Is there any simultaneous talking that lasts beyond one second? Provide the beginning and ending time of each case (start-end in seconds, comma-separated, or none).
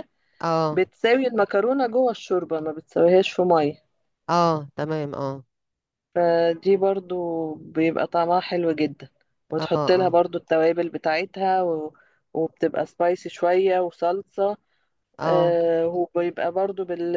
none